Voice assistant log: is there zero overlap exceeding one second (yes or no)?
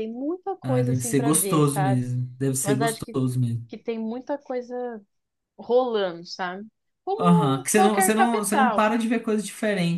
no